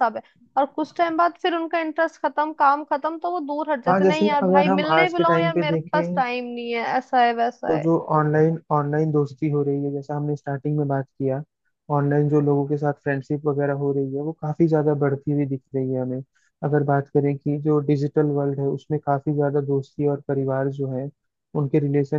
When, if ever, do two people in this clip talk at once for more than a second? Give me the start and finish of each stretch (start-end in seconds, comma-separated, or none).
3.9-6.2